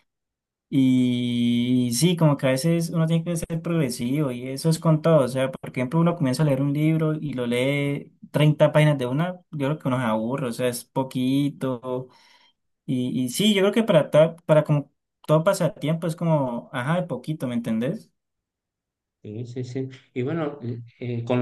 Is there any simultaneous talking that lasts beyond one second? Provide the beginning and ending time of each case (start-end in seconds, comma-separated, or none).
none